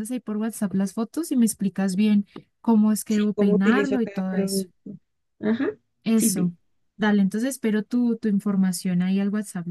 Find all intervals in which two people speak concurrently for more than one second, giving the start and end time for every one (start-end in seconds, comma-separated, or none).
3.1-4.7